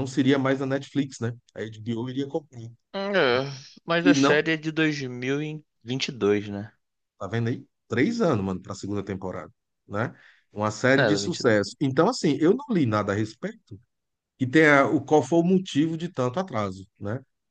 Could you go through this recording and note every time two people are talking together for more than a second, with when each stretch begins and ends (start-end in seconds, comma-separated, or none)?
none